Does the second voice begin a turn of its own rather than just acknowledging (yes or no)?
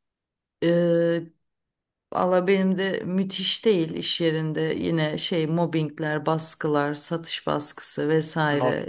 no